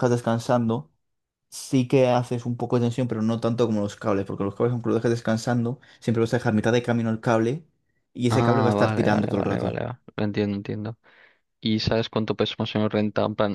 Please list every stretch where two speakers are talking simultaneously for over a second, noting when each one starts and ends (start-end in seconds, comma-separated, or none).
8.3-9.8